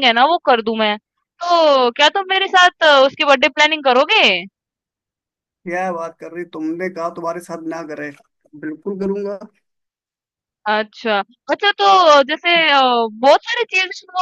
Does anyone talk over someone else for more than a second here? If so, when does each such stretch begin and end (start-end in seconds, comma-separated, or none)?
none